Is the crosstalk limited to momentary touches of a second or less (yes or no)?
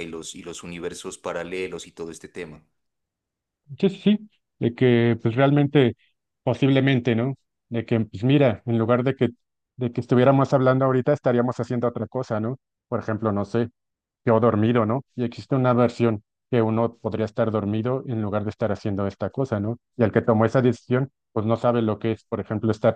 yes